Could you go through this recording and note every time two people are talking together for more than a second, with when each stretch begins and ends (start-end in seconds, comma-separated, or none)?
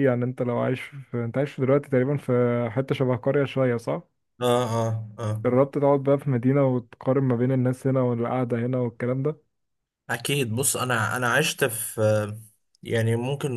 none